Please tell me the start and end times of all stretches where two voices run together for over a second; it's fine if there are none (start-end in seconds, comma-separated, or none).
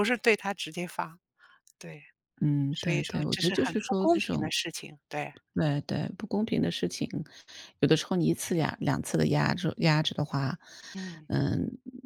2.7-4.5